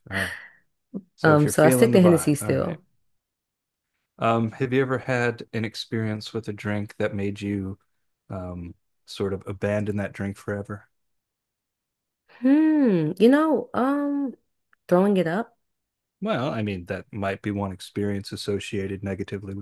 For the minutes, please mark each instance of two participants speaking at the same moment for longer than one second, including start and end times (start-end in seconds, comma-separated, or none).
1.2-2.8